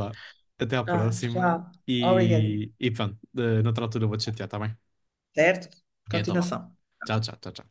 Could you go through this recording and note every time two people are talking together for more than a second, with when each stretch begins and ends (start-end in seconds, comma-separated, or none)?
0.9-2.6